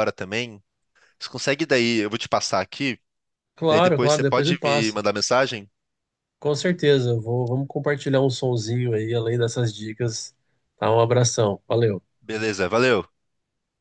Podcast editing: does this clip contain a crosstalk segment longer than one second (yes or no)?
yes